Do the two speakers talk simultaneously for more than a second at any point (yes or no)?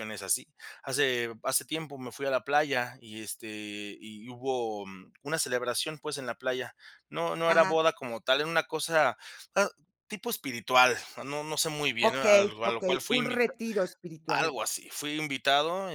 yes